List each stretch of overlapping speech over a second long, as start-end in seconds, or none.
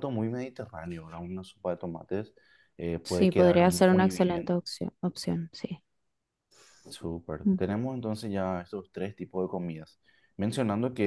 3.0-4.5